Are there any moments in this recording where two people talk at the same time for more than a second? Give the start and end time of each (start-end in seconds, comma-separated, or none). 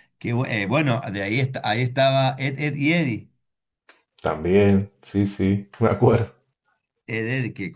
none